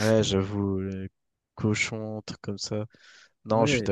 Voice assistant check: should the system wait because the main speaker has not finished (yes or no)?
yes